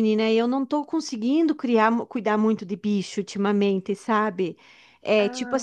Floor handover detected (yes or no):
no